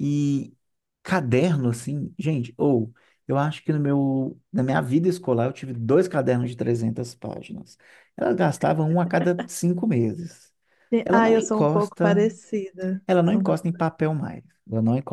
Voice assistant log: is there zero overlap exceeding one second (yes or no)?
no